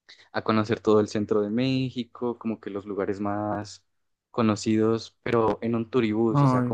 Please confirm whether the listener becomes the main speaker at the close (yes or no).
no